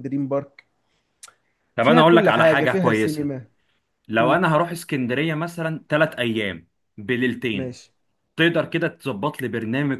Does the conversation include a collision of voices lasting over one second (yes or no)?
yes